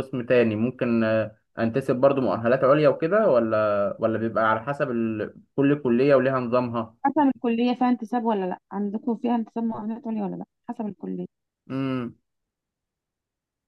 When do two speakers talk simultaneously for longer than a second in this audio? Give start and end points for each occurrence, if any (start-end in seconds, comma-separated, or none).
none